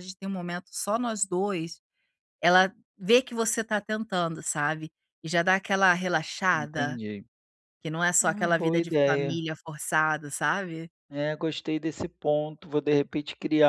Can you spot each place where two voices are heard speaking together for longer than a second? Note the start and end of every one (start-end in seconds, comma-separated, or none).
8.2-9.4